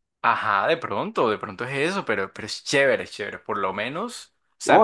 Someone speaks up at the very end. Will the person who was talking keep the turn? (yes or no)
no